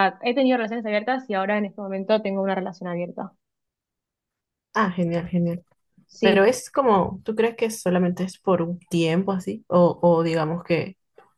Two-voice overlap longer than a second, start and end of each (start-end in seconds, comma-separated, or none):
none